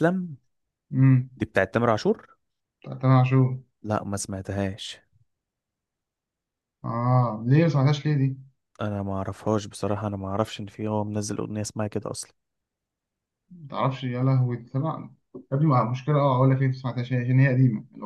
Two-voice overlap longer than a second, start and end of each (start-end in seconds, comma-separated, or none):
none